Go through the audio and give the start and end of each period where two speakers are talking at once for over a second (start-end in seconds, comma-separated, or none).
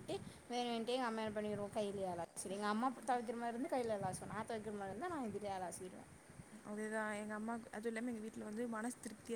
none